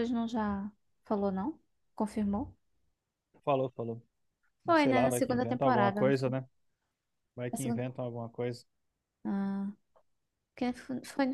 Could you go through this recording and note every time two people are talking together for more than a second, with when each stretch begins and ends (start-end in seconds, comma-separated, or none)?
4.6-6.3